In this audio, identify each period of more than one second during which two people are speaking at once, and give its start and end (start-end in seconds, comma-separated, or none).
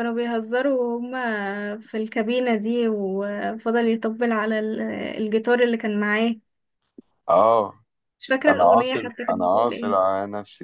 8.5-10.0